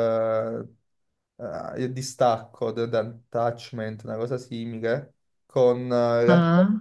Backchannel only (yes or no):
yes